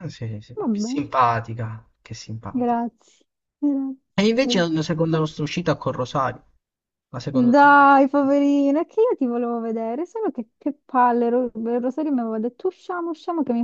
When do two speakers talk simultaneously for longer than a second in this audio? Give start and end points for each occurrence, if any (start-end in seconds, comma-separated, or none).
none